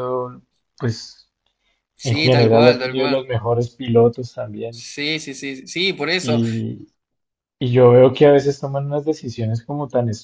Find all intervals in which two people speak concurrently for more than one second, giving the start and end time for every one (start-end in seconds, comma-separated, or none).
2.0-3.3